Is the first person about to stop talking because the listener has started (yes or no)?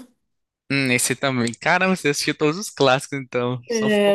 yes